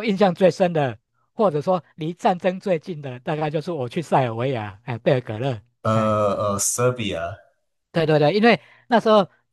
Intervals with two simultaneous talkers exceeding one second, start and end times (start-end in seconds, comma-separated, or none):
none